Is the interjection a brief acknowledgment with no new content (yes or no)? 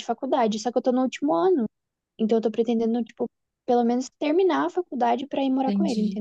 no